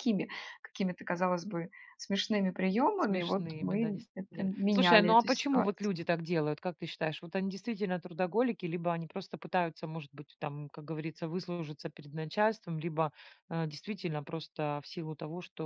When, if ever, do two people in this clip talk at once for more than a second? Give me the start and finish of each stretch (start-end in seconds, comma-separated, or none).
3.0-6.0